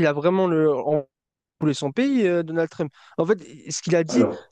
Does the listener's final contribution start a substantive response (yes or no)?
no